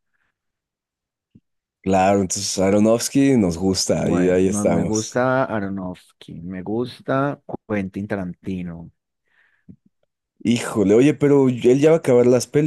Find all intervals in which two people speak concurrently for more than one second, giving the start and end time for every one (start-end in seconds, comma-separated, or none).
4.0-5.2